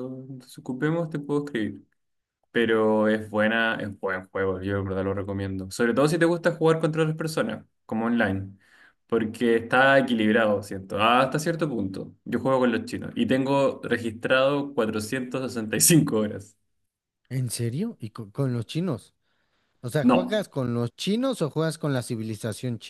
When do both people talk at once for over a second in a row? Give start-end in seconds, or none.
none